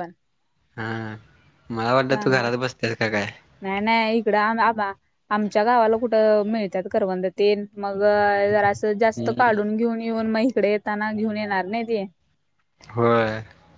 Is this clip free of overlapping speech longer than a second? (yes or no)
yes